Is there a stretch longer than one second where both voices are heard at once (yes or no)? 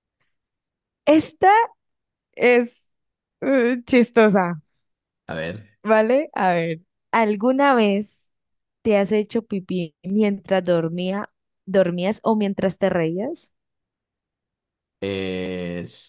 no